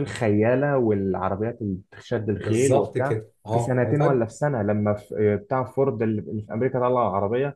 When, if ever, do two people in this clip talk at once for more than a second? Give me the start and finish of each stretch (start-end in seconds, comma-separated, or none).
2.4-4.2